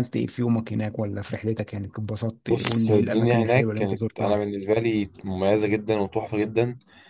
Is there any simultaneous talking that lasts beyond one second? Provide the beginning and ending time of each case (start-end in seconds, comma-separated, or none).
2.5-4.4